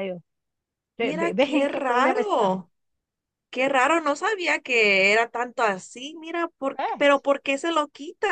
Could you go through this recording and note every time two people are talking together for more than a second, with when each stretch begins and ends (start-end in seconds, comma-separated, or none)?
1.0-2.6